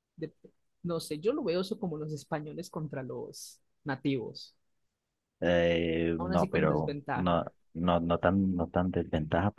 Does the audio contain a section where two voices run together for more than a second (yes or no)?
yes